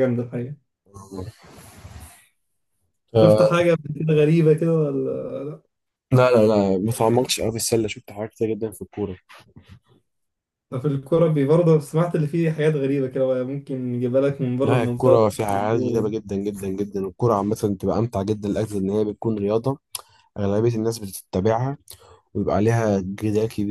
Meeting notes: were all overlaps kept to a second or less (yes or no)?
no